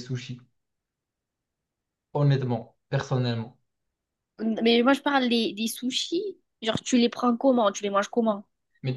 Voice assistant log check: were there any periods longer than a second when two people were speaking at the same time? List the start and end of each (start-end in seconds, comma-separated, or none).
none